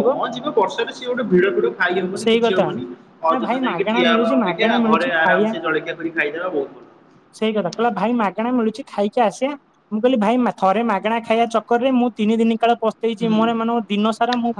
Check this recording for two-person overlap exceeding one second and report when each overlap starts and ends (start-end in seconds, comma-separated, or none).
3.3-5.5